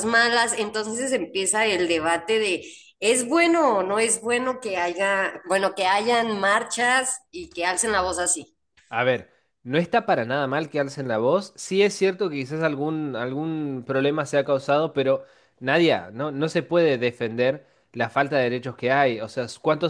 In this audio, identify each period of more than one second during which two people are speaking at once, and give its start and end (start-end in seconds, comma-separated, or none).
none